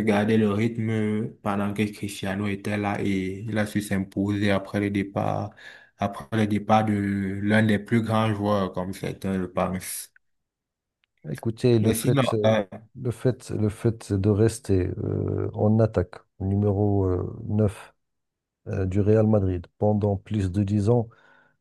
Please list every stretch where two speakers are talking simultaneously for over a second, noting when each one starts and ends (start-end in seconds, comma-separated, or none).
none